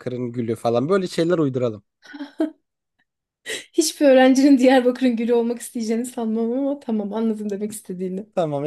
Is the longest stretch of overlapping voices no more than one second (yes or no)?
yes